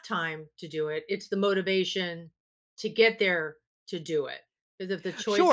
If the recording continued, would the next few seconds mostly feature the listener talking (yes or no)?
yes